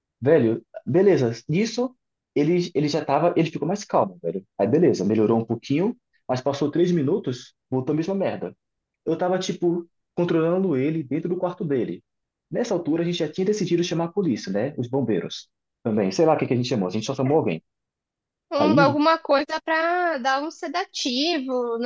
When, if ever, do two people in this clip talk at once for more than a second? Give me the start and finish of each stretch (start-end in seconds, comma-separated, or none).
none